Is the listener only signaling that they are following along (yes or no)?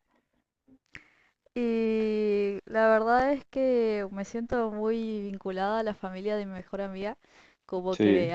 yes